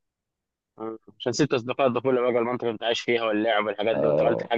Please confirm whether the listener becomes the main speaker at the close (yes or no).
yes